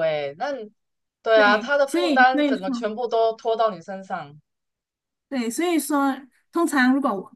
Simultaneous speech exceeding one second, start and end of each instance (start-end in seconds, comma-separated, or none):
1.3-2.6